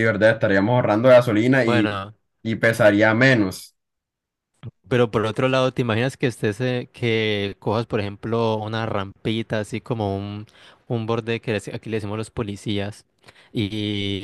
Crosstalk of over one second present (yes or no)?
no